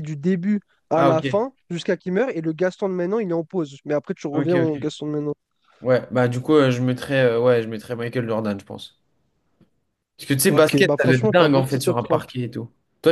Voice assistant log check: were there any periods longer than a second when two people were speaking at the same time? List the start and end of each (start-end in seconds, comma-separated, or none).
10.5-12.2